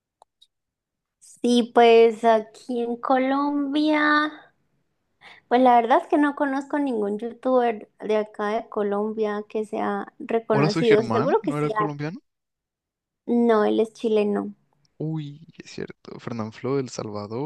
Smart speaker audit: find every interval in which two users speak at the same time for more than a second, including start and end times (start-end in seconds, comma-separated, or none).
10.5-11.9